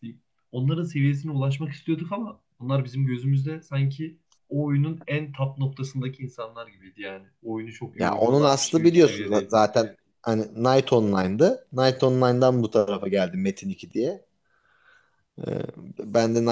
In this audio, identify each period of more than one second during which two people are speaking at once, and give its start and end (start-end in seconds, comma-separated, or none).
7.9-9.6